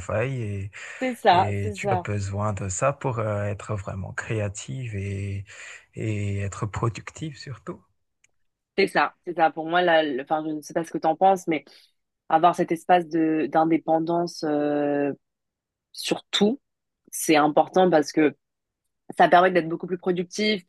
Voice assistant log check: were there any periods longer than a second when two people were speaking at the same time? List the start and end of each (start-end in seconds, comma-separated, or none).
none